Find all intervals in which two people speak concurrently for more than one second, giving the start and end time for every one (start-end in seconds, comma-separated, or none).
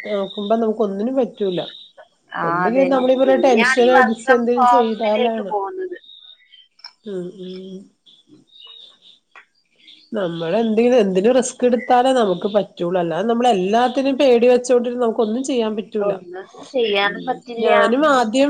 2.5-5.5